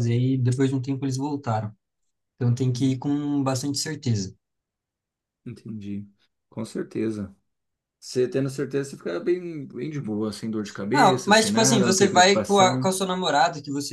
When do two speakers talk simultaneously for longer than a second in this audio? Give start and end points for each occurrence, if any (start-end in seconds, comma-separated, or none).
10.9-12.9